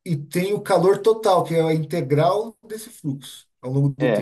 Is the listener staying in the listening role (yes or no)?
no